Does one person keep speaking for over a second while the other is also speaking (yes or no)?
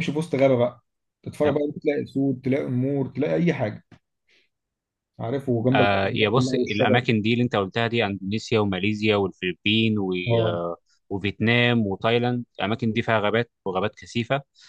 yes